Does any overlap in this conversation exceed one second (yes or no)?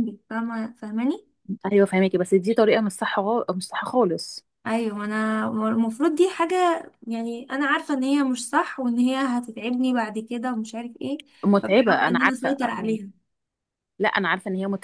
yes